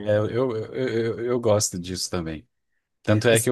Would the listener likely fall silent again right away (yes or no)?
yes